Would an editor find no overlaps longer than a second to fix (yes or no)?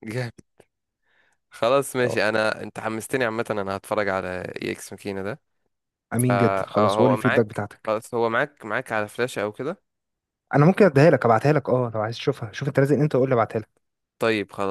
no